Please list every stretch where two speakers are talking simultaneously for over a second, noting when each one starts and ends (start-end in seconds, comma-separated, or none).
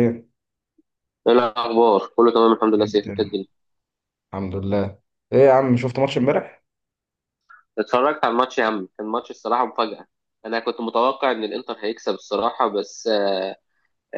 none